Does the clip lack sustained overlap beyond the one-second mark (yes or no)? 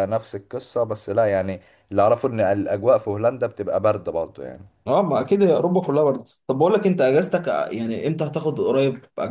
yes